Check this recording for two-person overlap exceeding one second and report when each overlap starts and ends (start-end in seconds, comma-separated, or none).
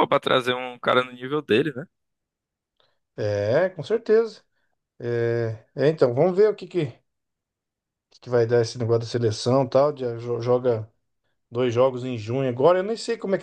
none